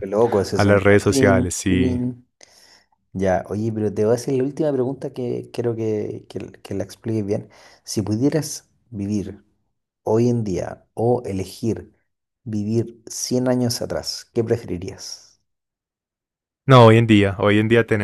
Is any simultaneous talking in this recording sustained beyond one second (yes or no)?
yes